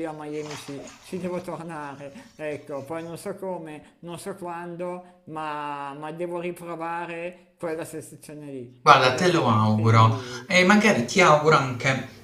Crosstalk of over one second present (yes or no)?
yes